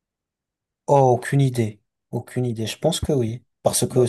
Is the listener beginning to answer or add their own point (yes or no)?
no